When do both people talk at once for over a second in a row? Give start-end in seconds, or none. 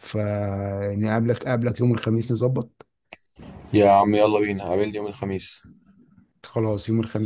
none